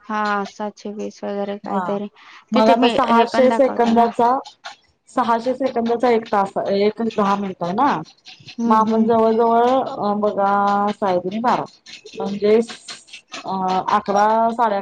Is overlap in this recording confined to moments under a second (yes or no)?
no